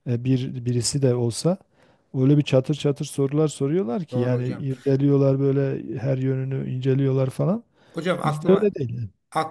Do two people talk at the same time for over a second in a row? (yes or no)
no